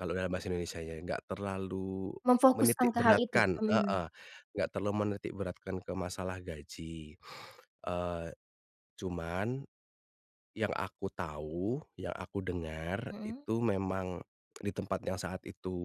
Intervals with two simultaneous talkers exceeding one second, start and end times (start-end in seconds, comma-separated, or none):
2.6-4.0